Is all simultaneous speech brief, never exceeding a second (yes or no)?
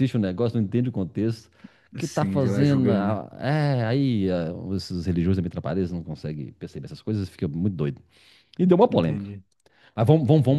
no